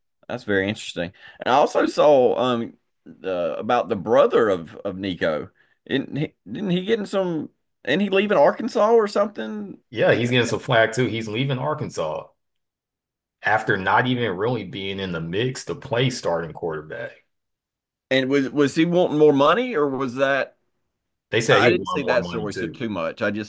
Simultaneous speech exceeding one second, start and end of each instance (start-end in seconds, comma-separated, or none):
21.5-22.8